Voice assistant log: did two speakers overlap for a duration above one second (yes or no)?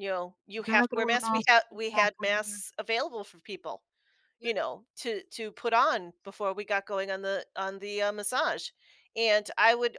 yes